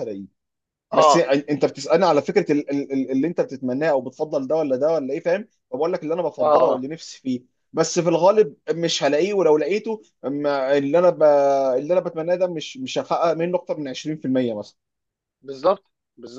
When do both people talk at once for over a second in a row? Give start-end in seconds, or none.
none